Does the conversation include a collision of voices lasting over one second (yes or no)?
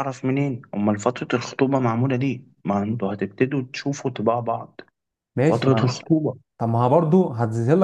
no